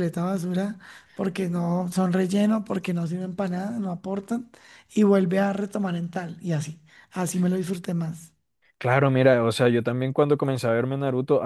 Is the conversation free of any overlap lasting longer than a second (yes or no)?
yes